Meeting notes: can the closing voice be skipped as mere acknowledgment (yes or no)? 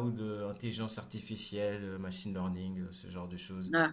no